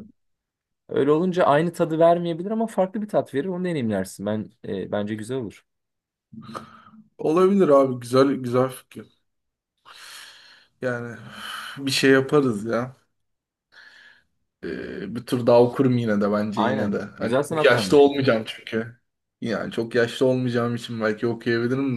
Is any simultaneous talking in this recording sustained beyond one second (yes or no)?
yes